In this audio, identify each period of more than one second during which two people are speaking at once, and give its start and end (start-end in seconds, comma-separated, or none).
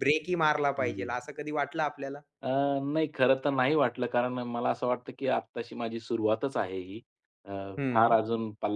none